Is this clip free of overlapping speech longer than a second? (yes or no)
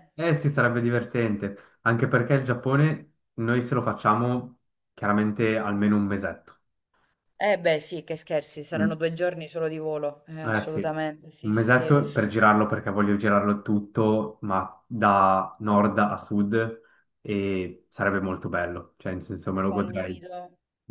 no